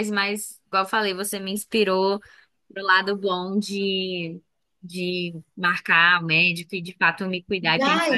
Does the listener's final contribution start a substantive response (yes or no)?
yes